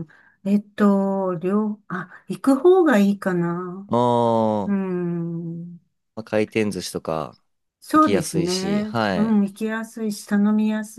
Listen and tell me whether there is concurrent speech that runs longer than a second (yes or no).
yes